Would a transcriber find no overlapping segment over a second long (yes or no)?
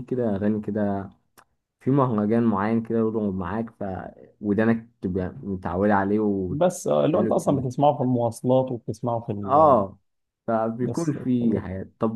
no